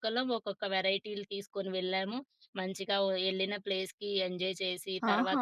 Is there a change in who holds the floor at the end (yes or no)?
yes